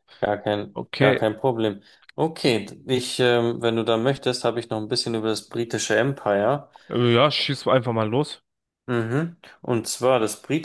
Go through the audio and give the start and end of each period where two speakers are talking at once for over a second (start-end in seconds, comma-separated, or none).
none